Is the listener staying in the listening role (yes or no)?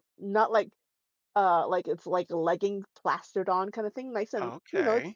no